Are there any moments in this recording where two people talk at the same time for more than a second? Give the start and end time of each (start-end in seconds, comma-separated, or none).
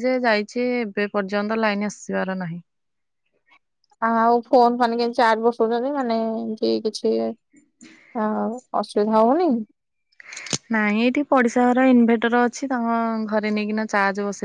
none